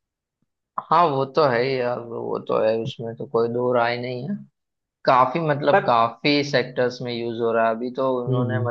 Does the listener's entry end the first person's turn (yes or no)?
no